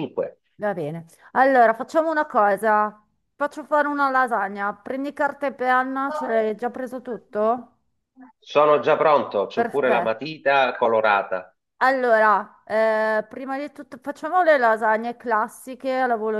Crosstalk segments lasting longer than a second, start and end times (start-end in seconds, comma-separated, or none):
none